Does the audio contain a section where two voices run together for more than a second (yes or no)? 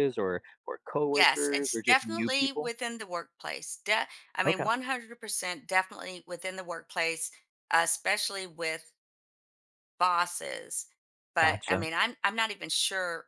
yes